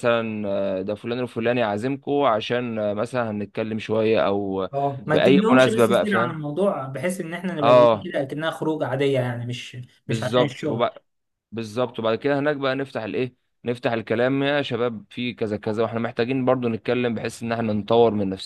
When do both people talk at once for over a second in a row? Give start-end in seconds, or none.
5.1-6.4